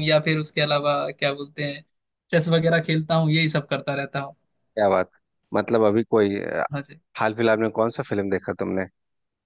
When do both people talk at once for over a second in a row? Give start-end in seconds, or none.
none